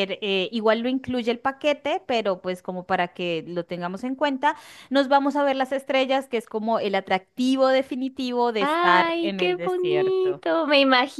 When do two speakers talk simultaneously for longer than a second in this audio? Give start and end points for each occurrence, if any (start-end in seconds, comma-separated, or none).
8.6-10.4